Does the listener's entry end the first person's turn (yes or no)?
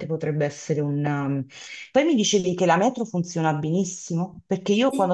no